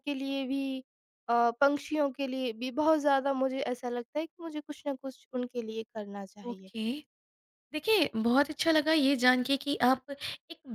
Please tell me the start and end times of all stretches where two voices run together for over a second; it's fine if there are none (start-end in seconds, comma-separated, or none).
none